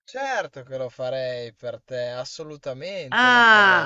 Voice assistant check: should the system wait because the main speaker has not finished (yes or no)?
no